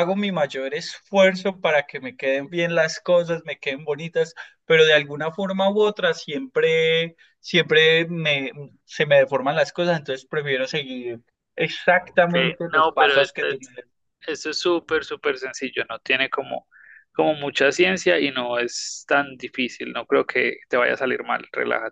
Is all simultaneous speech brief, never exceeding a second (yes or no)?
no